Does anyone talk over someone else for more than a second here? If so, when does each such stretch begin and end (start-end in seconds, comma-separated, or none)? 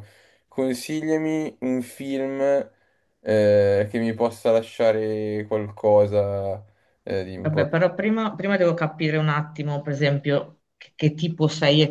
none